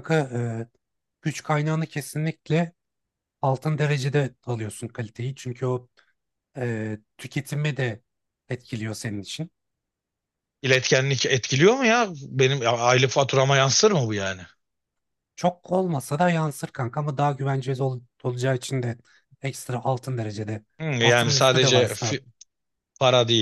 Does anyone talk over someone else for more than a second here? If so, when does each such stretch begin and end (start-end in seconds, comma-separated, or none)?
20.8-22.2